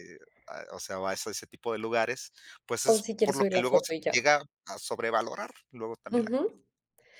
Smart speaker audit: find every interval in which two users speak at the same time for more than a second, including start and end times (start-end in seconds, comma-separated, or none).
2.8-4.3